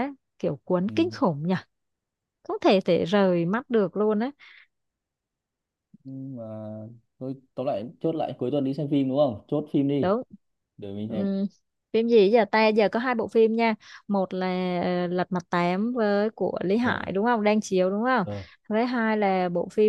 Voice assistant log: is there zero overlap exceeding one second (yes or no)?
yes